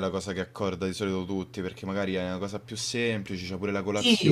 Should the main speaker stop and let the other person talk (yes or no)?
yes